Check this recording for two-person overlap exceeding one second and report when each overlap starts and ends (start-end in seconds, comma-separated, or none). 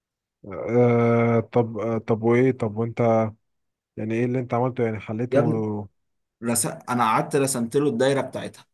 none